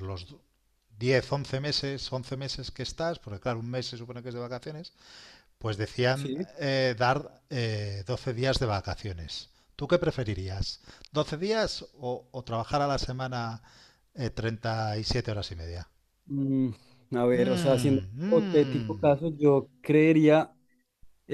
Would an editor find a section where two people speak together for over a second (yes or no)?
yes